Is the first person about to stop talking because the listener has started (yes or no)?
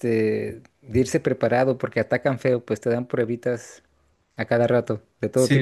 yes